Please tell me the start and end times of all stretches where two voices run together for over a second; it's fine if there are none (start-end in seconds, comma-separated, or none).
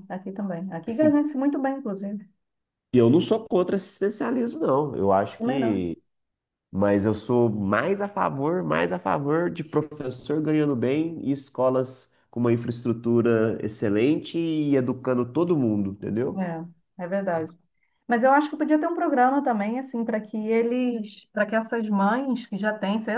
none